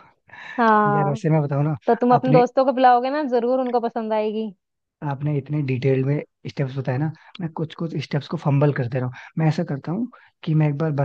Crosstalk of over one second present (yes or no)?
no